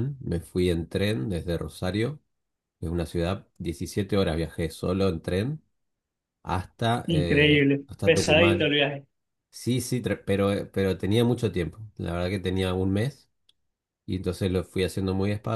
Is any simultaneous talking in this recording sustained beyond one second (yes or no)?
yes